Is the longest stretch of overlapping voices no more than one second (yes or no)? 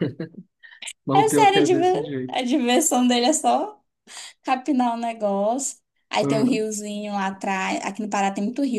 no